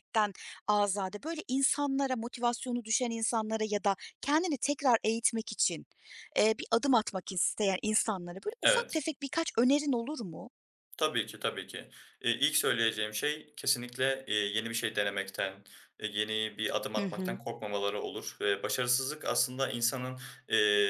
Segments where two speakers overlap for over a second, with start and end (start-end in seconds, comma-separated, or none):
none